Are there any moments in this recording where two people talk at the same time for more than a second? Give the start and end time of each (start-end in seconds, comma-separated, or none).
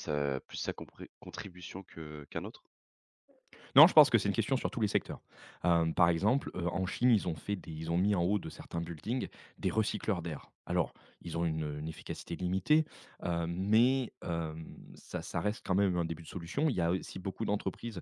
none